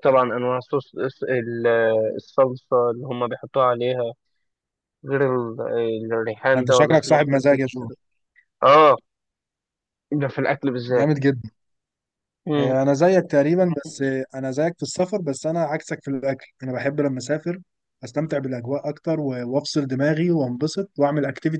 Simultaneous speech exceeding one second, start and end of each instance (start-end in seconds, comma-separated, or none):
6.5-7.9